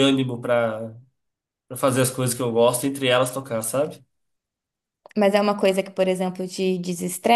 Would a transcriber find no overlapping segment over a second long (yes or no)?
yes